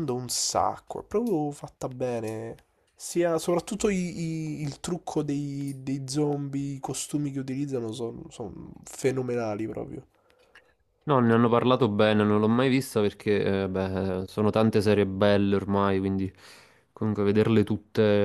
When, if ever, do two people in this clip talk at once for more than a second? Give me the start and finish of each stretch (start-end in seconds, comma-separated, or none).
none